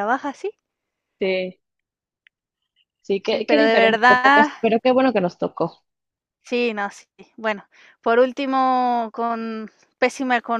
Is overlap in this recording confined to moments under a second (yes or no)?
no